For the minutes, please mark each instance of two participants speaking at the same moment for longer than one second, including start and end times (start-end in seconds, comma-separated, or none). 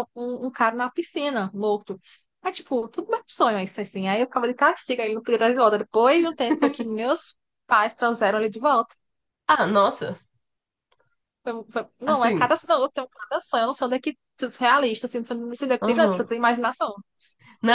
none